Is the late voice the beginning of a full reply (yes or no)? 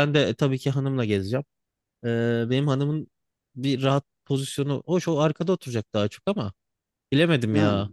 no